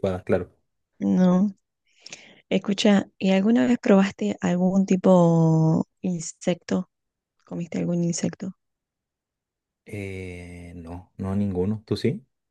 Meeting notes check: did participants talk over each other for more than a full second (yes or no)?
no